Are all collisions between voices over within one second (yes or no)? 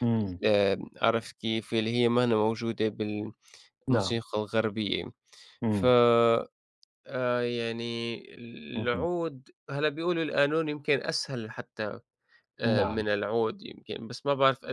yes